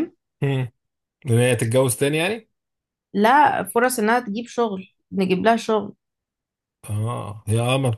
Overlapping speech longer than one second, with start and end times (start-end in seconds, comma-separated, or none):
none